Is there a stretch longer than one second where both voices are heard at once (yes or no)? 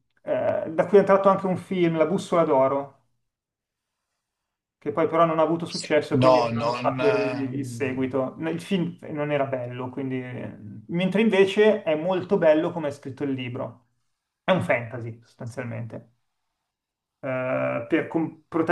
yes